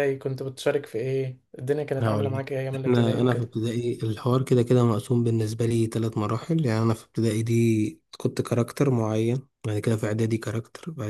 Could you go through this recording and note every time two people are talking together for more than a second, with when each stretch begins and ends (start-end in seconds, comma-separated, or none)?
2.0-3.5